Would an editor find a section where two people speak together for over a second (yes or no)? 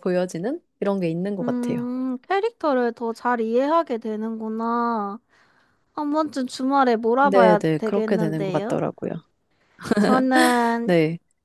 yes